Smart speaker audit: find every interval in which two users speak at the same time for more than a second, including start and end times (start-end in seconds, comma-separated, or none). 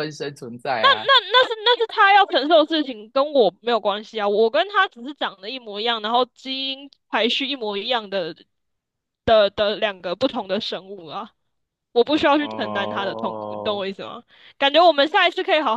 12.4-13.8